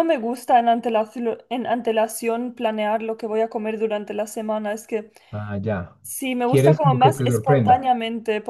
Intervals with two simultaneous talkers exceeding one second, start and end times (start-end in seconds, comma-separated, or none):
6.5-7.9